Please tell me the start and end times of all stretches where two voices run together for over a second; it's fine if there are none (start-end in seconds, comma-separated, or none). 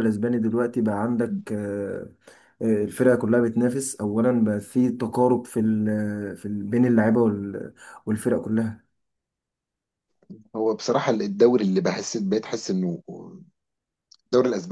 none